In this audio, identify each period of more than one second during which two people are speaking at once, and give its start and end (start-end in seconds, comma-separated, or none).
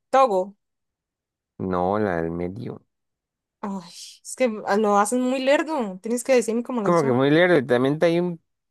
none